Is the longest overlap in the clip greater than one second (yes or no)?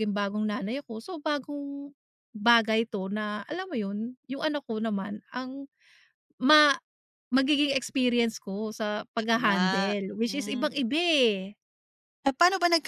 yes